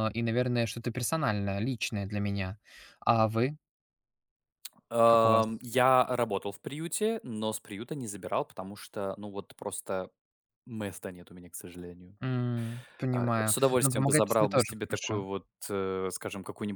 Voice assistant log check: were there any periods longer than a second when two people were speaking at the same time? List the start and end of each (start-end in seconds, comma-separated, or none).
13.1-15.2